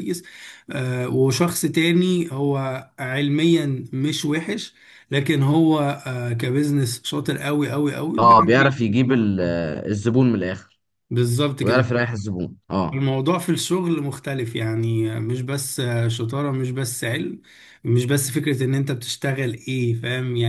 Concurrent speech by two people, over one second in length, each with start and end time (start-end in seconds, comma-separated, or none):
8.2-9.6